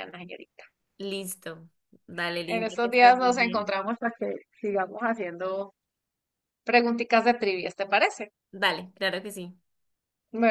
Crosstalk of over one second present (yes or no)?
yes